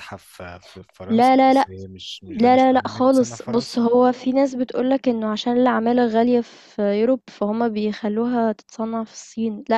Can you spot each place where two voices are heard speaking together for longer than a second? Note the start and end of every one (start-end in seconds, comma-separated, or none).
2.4-3.8